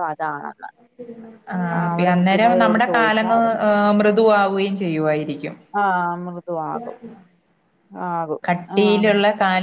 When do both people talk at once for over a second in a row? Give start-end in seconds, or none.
1.8-3.6